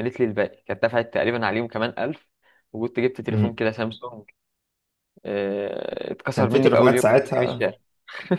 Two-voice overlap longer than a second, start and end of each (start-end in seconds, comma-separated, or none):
6.3-7.7